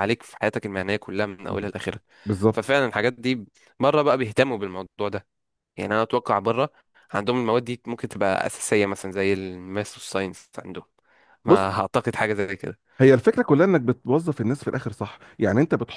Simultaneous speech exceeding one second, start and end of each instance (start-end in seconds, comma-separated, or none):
none